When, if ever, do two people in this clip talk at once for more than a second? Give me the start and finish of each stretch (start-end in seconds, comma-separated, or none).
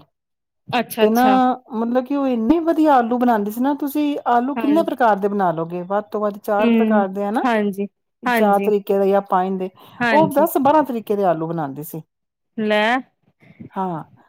none